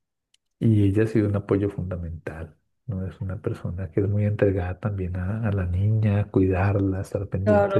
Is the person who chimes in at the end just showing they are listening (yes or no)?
no